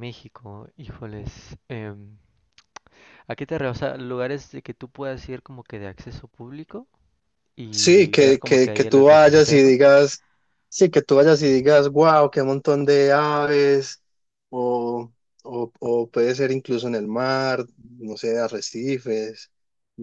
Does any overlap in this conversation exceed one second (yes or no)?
yes